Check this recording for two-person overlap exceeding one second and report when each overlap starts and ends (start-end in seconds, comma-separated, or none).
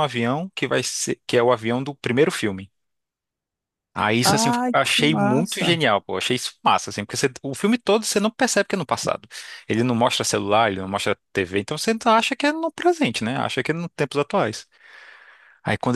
4.2-5.8